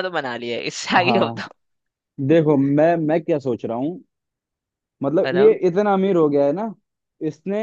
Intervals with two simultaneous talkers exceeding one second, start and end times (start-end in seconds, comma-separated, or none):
none